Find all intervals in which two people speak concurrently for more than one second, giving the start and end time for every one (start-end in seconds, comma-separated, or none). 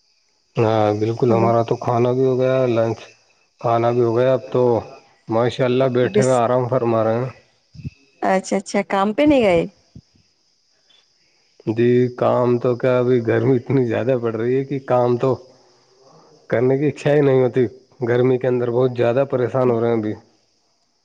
none